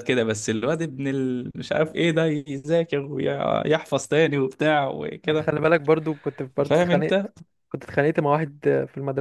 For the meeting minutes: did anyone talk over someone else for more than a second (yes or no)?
no